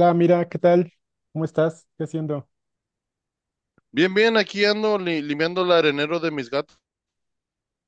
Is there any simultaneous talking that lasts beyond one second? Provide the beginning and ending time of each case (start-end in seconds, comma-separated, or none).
none